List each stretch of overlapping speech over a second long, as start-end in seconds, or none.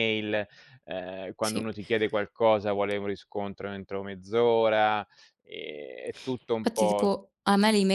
none